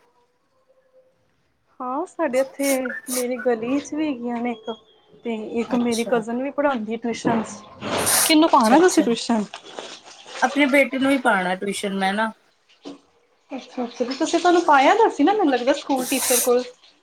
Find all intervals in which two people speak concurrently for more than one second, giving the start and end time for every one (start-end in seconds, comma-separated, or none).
none